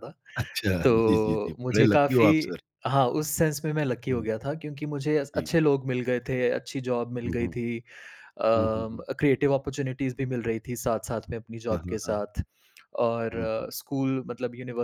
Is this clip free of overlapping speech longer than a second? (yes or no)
no